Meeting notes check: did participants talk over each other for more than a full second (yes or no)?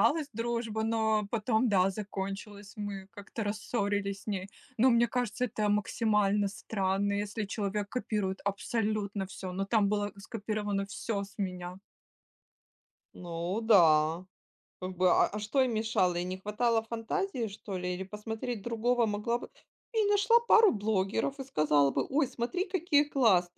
no